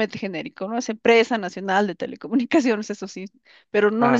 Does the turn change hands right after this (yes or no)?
no